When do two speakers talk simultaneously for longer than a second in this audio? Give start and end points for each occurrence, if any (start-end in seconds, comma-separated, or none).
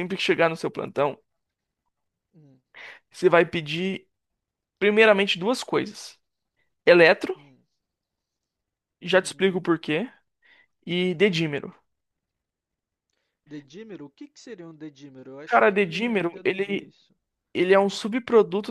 15.4-16.9